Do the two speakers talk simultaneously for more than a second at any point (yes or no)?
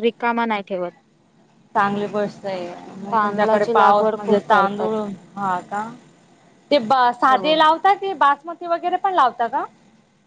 yes